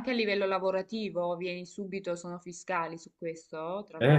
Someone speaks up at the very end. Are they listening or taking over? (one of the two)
taking over